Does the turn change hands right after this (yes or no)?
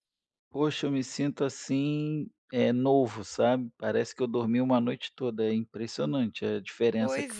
yes